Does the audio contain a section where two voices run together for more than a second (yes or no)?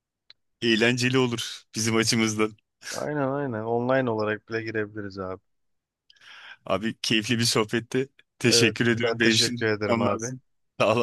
yes